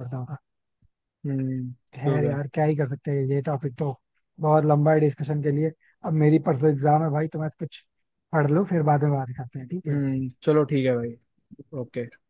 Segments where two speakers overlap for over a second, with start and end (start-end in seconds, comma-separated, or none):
none